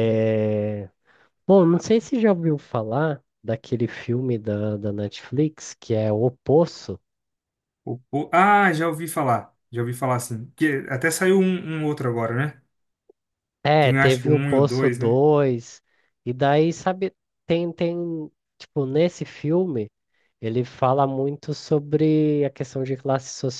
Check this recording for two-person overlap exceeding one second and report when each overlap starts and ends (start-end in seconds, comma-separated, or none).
13.8-15.2